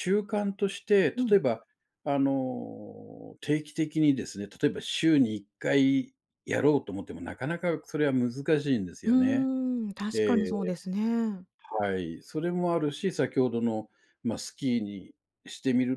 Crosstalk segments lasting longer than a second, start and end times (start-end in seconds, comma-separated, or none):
none